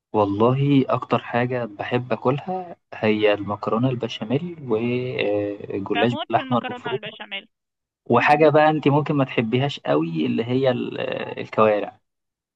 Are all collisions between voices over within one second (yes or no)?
no